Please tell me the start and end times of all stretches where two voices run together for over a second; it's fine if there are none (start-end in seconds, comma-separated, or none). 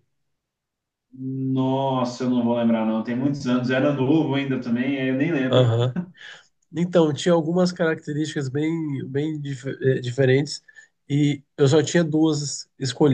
none